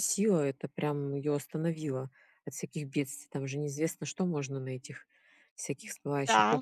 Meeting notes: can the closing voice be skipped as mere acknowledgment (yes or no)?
no